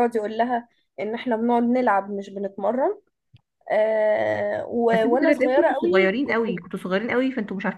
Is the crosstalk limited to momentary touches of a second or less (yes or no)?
no